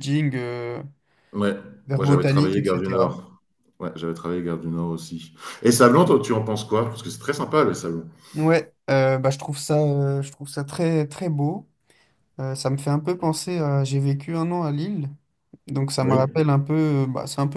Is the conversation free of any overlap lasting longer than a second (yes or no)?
no